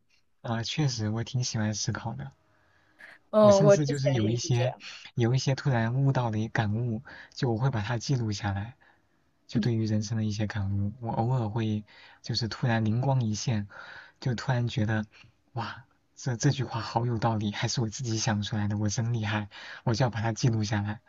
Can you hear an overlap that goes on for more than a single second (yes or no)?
yes